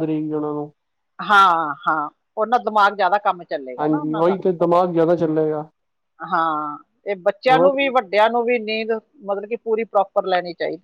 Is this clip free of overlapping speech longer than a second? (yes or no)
yes